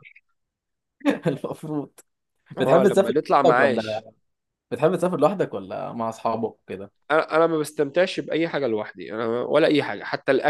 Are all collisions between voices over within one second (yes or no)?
no